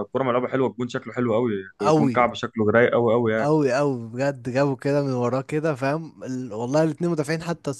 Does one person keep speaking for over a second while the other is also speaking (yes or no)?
no